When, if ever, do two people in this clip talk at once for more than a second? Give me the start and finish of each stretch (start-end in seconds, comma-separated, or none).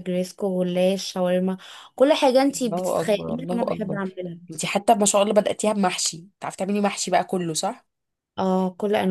2.7-4.0